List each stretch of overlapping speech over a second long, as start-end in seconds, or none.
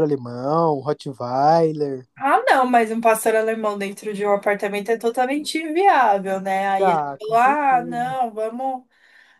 6.8-8.2